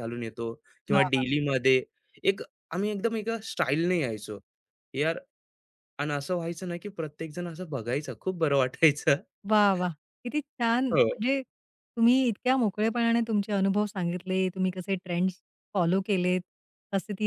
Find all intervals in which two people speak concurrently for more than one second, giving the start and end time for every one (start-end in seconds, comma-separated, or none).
none